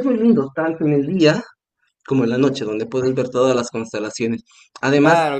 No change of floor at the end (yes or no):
yes